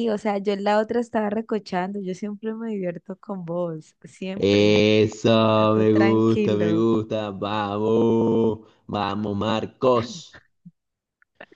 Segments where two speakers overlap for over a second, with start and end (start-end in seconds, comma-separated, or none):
5.5-6.9